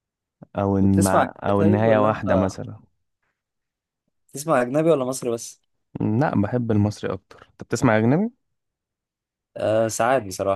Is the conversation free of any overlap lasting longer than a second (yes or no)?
no